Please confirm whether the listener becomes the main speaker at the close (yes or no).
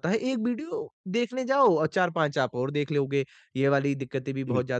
no